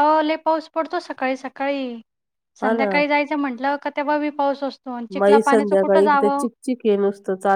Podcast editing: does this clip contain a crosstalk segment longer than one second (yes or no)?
yes